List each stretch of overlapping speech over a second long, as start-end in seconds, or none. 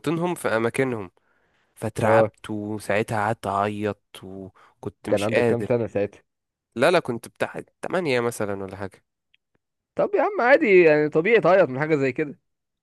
none